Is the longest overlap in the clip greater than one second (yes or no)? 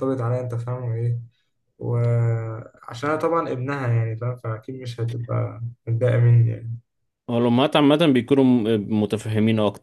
no